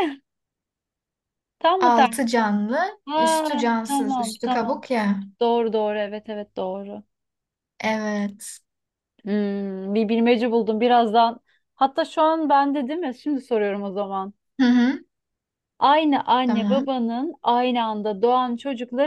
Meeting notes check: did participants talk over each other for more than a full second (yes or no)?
yes